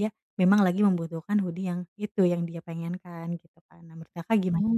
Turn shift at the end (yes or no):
yes